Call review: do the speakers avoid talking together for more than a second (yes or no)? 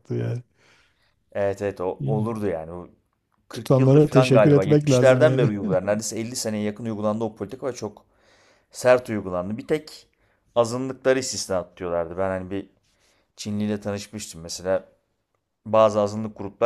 no